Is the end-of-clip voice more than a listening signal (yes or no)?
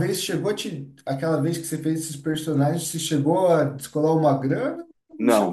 yes